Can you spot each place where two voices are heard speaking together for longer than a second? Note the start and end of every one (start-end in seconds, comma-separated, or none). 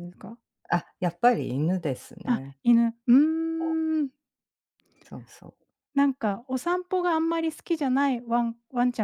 none